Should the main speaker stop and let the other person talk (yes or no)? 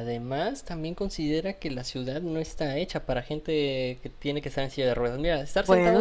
no